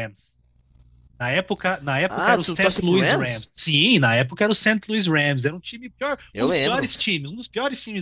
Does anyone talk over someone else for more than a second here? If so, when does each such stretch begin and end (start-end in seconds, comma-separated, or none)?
2.1-3.5